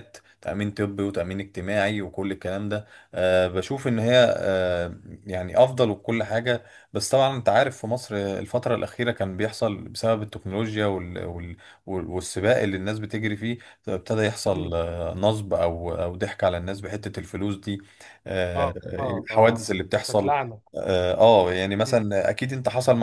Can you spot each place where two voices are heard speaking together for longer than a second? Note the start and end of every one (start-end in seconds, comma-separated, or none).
18.6-20.3